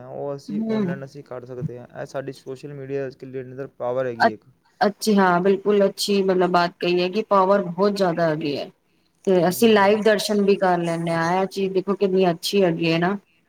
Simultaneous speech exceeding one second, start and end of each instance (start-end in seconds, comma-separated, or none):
none